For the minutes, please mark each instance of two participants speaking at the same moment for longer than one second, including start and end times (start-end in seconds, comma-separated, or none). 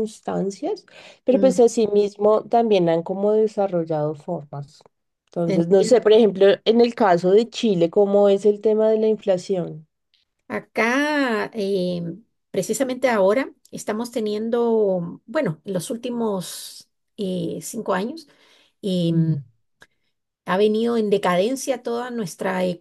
none